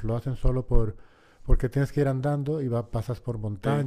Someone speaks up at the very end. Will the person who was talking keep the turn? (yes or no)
yes